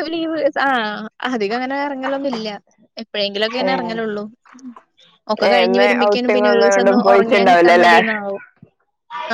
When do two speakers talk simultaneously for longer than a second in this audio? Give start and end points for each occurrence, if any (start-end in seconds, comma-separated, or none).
5.5-8.0